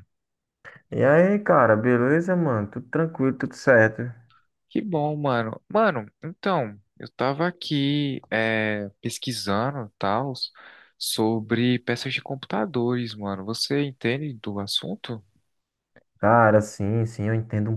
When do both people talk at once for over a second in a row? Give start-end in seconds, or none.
none